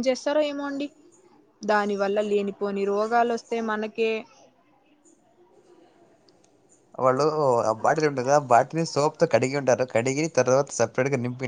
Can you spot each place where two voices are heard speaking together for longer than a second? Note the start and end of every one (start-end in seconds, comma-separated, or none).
none